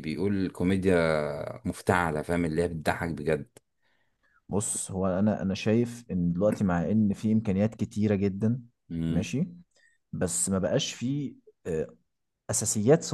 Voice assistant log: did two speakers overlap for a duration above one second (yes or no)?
no